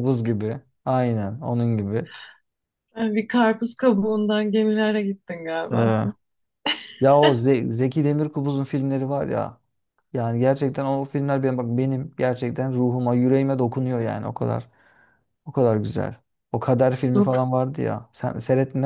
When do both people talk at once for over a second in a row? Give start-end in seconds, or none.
none